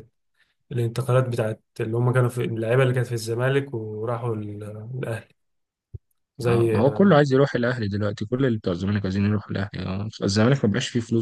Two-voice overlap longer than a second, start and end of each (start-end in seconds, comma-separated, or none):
none